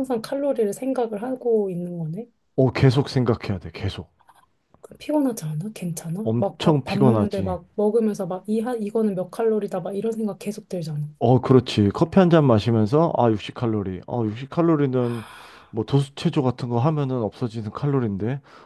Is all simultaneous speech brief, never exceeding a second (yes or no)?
no